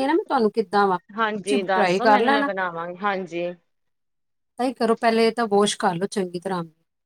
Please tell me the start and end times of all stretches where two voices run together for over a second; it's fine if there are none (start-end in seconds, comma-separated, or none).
1.2-2.5